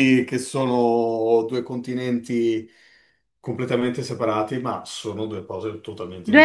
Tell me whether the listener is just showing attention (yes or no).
no